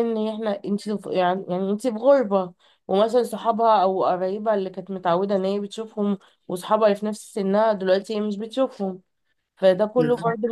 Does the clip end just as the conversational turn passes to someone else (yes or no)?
no